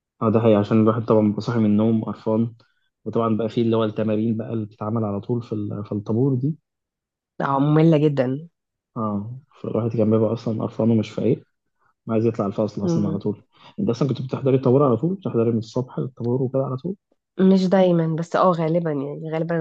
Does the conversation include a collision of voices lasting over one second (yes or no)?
no